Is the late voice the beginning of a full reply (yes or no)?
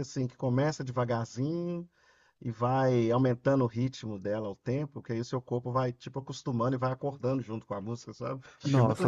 yes